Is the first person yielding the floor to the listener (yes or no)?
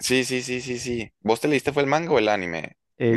yes